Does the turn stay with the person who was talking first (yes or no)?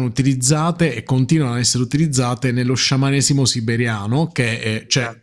yes